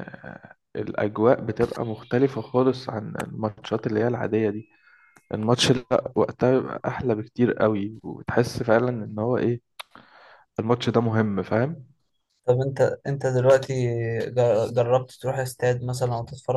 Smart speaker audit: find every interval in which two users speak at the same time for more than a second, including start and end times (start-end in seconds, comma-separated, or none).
none